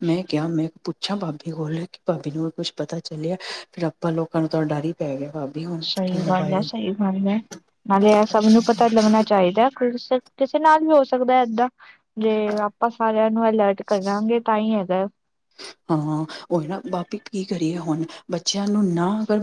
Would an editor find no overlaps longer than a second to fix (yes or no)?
yes